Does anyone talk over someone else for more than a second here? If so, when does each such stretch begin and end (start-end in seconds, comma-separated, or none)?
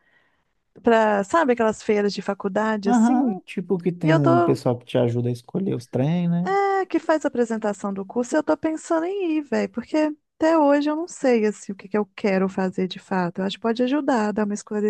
none